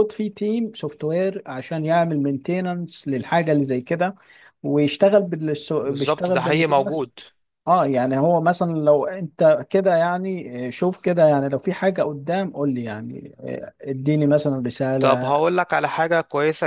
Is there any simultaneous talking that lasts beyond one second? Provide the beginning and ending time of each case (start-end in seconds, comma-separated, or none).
5.8-7.1